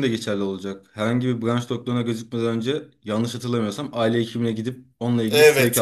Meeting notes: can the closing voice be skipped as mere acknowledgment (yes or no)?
no